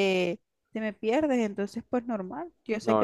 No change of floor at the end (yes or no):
yes